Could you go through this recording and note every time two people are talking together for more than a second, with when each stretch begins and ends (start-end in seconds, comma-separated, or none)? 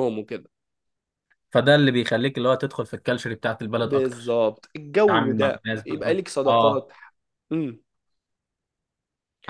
5.0-6.9